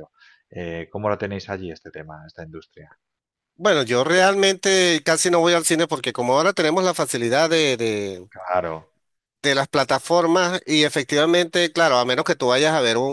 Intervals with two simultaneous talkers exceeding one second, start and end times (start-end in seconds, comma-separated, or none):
none